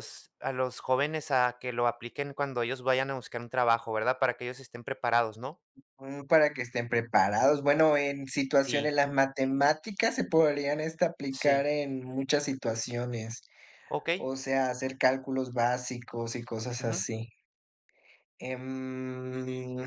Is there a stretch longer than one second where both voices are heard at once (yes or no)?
no